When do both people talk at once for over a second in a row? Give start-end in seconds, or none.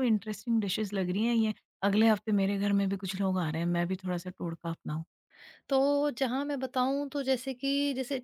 none